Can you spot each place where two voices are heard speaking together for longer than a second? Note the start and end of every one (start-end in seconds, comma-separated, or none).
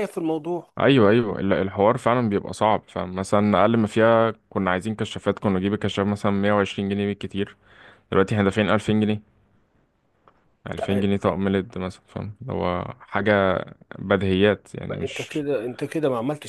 none